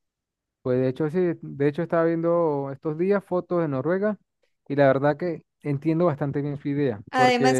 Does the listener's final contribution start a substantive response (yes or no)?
yes